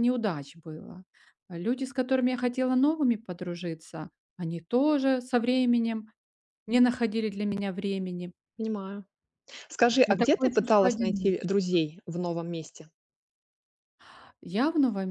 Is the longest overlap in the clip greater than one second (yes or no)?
yes